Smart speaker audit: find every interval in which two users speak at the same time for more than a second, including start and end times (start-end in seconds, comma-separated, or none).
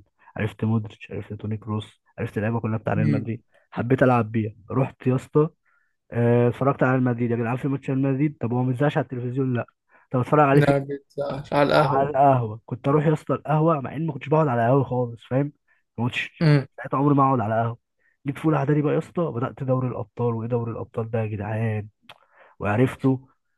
none